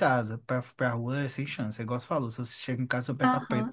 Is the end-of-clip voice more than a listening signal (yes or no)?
yes